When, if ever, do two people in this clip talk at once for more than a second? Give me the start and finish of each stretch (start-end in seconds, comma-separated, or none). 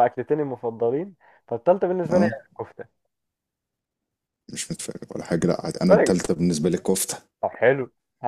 none